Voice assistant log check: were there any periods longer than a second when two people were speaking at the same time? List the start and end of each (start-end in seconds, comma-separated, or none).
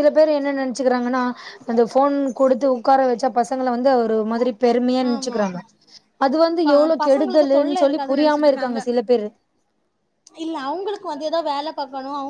6.6-8.5